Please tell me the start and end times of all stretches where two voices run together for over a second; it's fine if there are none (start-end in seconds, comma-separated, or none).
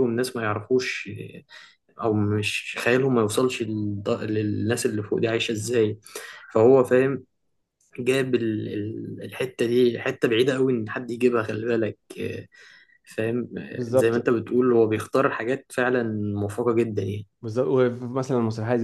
none